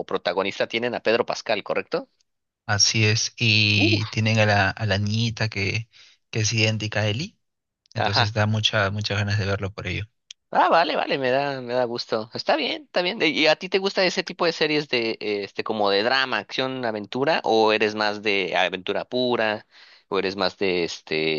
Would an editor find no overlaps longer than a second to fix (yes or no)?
yes